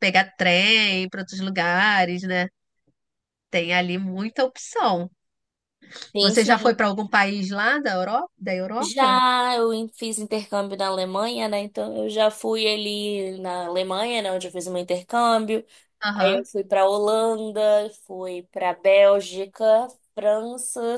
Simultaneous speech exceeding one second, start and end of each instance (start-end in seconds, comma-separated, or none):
none